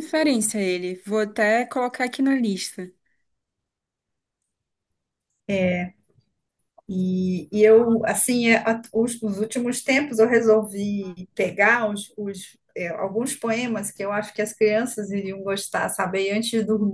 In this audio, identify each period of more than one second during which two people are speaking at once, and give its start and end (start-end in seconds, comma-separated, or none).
none